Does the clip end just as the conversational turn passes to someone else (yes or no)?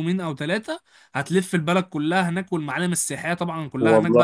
no